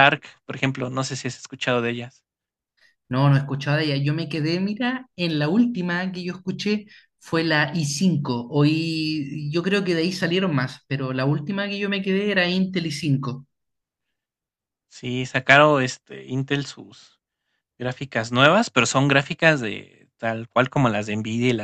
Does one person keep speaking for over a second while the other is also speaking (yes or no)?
no